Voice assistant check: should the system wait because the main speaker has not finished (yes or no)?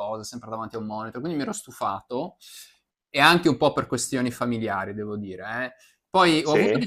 yes